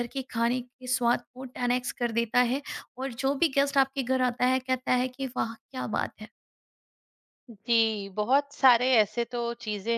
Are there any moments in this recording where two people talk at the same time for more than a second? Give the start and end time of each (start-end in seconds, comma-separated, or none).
none